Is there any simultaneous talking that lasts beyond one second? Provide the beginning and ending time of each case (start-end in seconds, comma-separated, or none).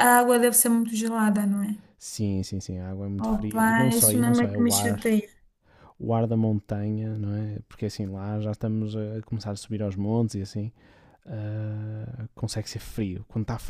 3.2-5.0